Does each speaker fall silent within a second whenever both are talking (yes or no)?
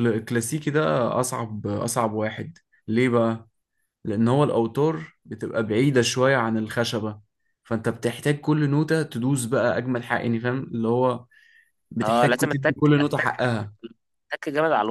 no